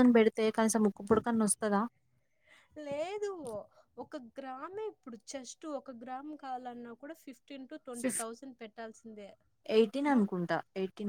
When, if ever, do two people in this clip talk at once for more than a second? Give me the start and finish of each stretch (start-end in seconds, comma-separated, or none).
none